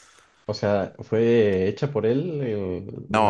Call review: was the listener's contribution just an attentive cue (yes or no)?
no